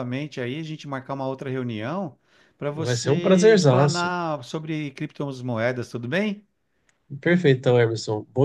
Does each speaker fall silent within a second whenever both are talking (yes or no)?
no